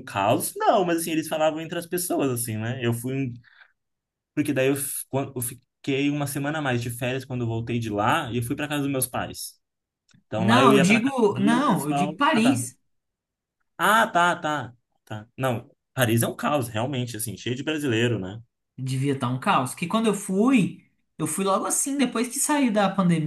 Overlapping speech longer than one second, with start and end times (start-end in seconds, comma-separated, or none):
10.3-12.6